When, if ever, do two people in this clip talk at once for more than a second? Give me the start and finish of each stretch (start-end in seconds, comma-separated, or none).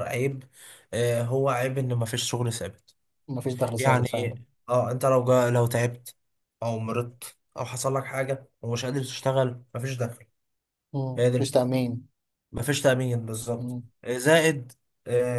none